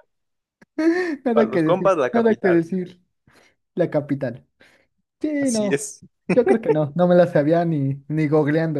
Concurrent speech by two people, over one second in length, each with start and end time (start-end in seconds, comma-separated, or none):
1.3-2.6